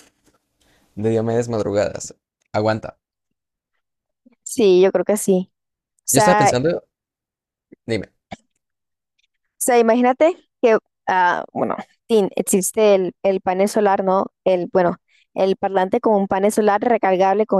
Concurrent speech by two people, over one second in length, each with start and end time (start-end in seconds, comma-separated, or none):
none